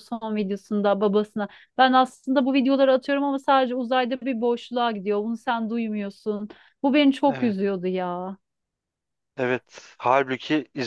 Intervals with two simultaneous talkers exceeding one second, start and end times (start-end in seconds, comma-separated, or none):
none